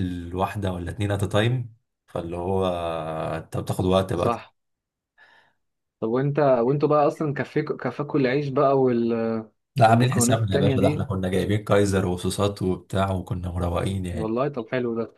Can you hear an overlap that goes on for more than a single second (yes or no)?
yes